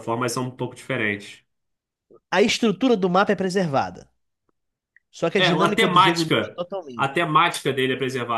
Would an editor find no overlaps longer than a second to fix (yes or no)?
no